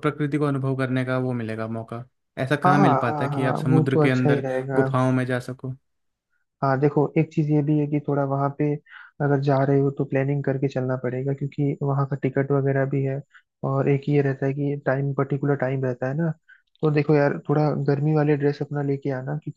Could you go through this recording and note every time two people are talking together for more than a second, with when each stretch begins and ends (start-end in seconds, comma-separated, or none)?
2.6-4.8